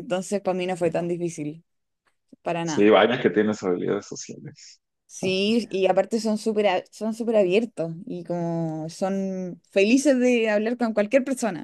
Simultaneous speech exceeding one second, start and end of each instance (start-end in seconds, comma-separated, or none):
none